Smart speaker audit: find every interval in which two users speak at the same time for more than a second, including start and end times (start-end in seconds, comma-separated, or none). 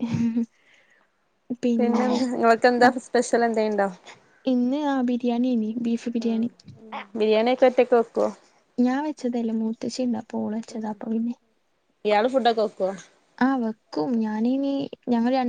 none